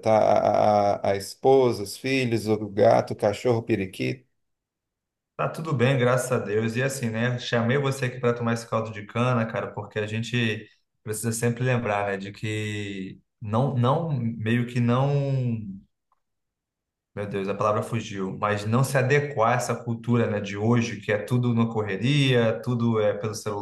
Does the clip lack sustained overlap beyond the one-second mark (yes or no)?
yes